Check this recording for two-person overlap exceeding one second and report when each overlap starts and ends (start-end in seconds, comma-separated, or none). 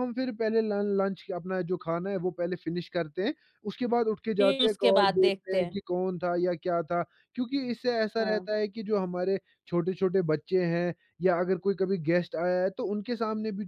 4.4-5.8